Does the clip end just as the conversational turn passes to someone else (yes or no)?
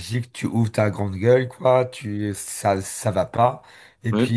no